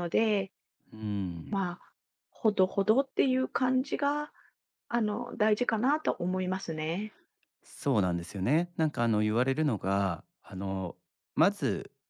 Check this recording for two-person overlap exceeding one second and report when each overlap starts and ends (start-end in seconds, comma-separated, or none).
none